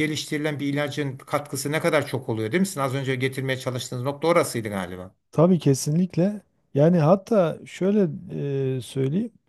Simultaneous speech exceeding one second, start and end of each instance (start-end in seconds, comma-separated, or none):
none